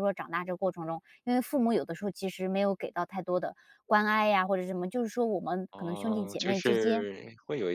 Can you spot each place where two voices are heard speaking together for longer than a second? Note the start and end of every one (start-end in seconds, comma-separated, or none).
5.7-7.1